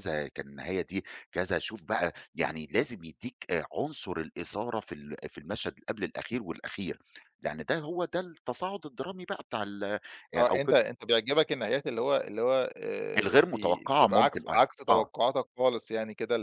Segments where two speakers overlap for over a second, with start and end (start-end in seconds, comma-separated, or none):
13.2-15.1